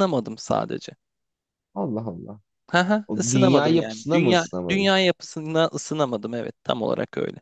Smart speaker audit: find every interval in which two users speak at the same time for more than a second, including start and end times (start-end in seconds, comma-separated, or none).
3.1-4.9